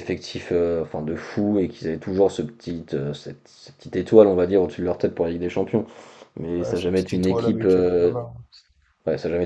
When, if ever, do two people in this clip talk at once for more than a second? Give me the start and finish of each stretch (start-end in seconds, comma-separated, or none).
6.6-8.1